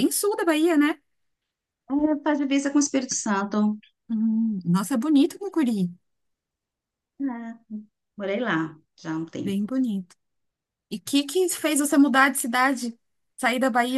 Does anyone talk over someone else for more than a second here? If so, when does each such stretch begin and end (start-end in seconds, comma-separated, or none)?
none